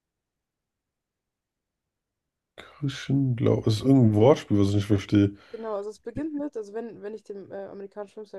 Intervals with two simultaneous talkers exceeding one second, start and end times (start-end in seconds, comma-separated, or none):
none